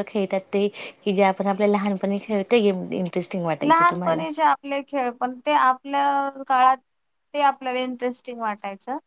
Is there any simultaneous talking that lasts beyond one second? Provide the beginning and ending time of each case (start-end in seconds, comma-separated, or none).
none